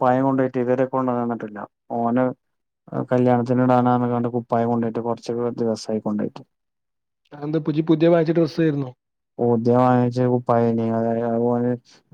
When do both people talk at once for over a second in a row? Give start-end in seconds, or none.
none